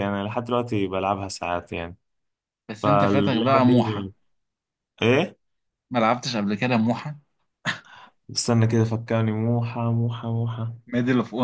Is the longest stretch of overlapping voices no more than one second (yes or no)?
no